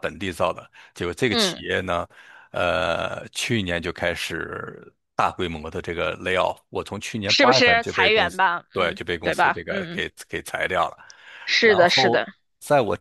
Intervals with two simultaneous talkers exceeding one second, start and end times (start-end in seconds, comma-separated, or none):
7.3-10.0